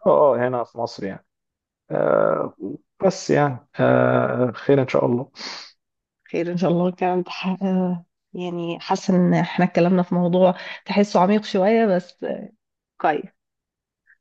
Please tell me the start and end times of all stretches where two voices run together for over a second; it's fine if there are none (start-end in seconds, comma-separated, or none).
none